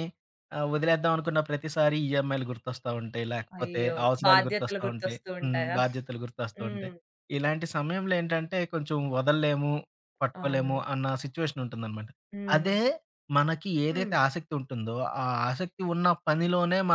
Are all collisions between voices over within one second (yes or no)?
no